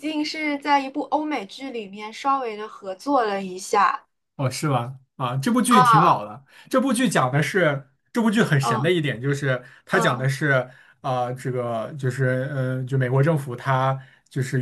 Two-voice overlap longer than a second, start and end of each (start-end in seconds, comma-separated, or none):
none